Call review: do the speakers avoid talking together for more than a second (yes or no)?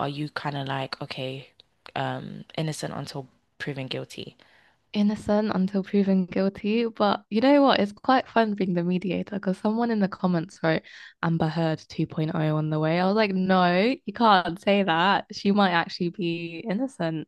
yes